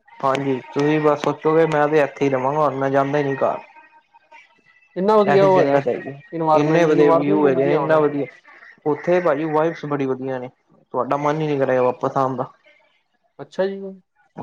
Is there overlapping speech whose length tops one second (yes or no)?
yes